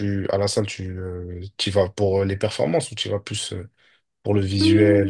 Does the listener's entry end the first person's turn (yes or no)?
yes